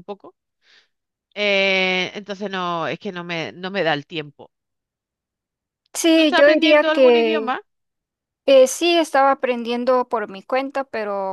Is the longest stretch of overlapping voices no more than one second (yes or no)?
no